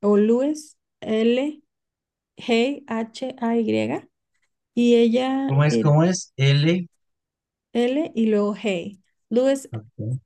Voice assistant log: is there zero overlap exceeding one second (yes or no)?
yes